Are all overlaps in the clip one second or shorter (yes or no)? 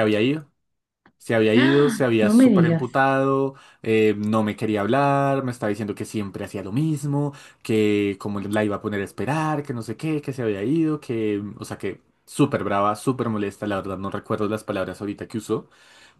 no